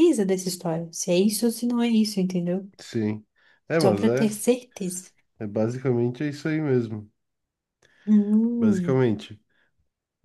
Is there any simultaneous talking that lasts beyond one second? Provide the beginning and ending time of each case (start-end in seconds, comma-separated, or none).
none